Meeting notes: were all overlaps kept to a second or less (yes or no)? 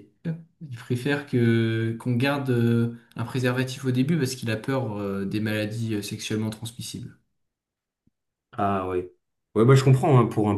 yes